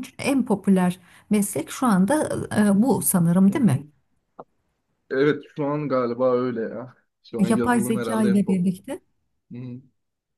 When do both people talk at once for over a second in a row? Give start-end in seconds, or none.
7.4-8.8